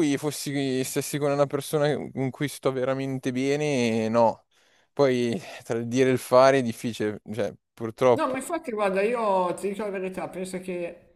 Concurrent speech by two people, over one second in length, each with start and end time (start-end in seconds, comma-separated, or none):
none